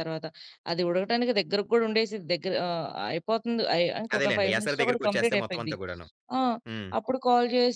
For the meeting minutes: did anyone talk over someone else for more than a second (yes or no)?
yes